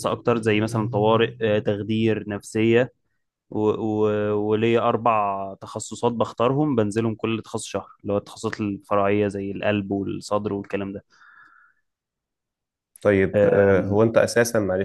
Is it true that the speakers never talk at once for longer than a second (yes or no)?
yes